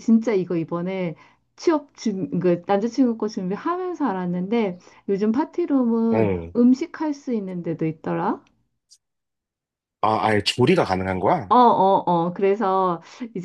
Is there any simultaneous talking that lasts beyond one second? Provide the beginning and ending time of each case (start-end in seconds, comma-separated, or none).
none